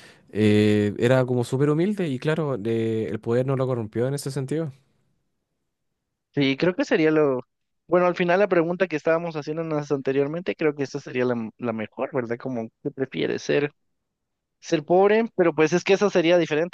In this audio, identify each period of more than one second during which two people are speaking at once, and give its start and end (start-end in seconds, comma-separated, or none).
none